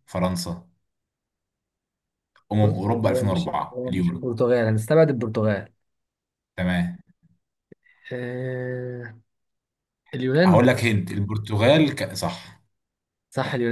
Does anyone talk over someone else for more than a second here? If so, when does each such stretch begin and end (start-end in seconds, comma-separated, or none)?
2.6-4.2